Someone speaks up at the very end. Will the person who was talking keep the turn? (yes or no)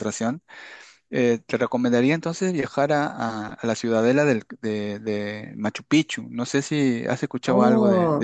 no